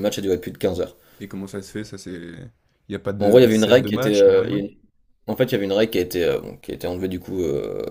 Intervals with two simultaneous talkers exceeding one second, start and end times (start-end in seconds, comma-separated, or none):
3.2-4.6